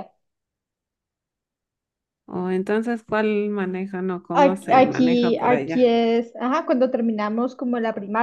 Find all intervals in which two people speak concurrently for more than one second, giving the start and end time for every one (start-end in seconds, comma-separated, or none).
4.3-5.9